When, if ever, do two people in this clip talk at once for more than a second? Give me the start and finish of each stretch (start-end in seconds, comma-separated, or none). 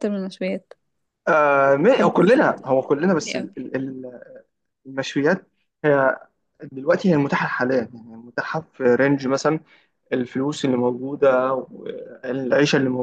1.9-3.5